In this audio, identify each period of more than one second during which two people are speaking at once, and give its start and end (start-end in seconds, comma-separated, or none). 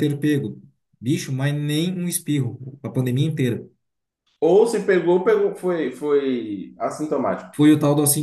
none